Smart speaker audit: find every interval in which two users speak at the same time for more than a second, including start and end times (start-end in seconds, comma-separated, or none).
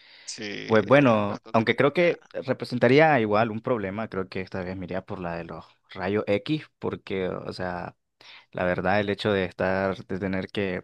0.7-2.3